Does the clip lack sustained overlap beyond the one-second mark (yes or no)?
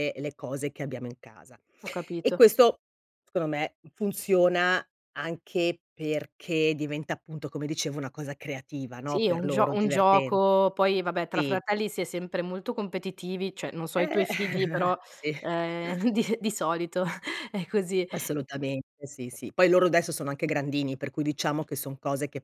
no